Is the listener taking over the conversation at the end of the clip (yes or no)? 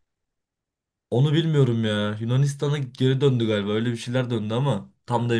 yes